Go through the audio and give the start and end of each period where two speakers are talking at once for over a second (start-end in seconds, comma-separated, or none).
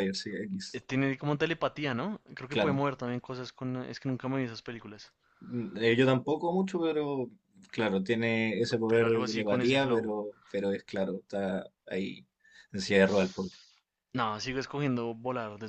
8.9-10.1